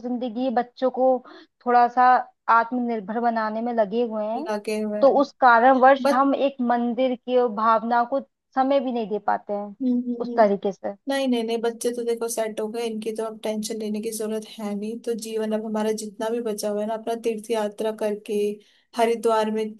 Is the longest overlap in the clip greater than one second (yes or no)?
no